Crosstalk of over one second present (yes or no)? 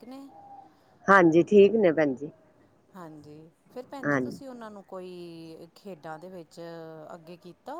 no